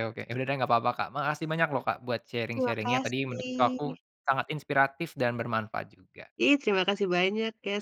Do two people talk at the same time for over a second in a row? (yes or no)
yes